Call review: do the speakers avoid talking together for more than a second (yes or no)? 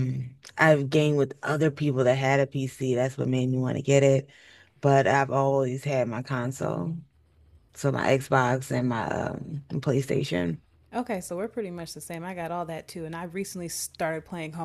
yes